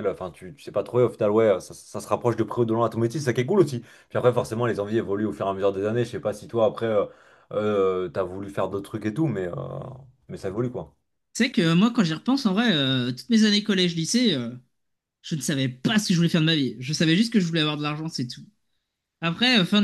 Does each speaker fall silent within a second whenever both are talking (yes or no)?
yes